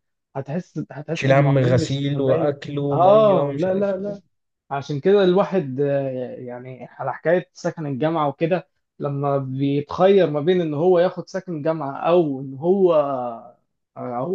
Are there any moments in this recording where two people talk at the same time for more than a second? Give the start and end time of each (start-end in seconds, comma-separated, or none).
1.1-4.2